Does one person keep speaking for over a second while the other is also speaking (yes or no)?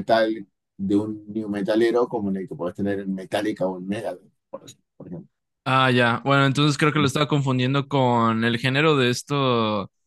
no